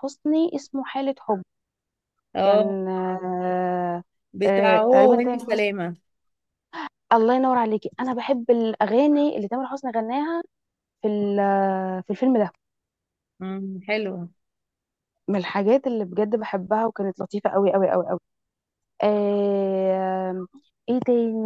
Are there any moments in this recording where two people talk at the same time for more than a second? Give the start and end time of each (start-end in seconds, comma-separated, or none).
4.5-5.8